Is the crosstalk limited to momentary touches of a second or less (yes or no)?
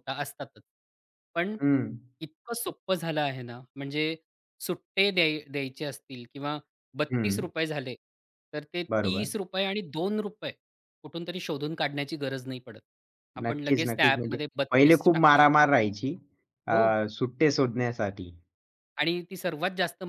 no